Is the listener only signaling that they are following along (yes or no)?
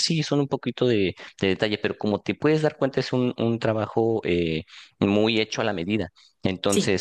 yes